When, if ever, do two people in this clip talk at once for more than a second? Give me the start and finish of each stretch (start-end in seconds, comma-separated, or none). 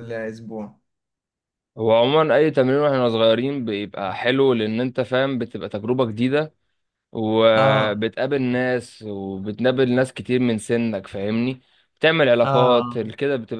none